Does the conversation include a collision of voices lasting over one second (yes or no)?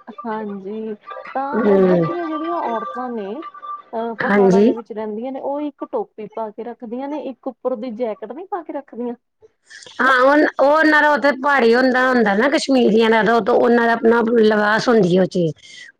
no